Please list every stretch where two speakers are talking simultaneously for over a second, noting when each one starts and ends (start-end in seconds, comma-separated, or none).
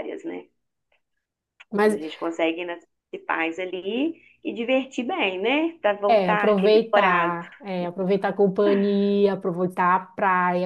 6.1-7.4